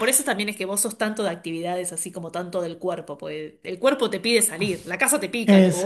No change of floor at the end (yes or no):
no